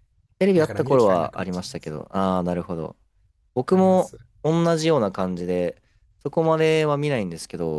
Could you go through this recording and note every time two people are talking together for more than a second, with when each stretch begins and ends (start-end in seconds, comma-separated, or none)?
0.5-2.0